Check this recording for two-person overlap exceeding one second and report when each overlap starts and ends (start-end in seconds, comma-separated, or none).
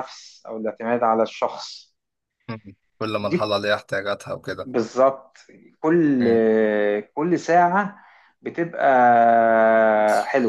none